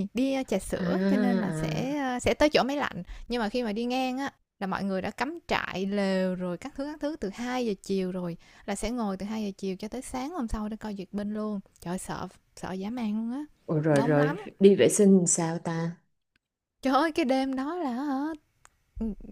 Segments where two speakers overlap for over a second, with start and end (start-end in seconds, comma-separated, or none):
0.8-1.9